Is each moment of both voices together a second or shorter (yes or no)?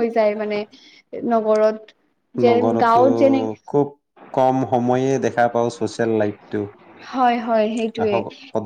yes